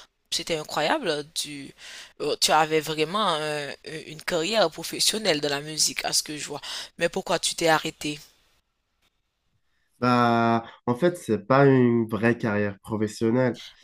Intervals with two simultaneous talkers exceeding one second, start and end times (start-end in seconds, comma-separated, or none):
none